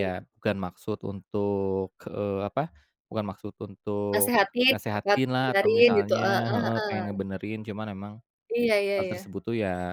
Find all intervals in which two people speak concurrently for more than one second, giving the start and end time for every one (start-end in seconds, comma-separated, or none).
4.1-7.1